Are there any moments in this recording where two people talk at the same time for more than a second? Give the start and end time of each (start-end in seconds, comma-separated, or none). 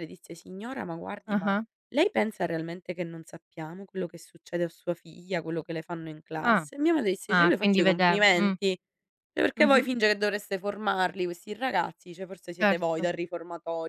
7.3-8.6